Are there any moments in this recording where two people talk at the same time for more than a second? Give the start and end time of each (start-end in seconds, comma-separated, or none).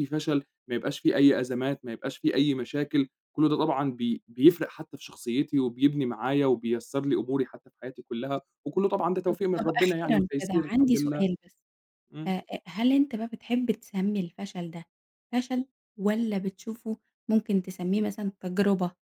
9.3-11.3